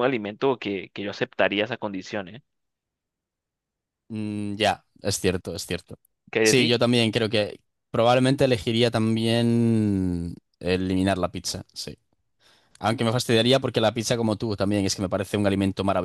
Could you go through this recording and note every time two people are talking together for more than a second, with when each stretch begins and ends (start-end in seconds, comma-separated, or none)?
none